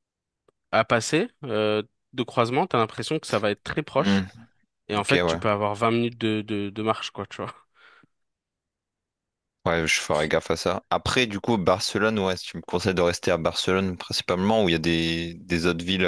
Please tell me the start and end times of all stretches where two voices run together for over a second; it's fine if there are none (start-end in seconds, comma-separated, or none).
none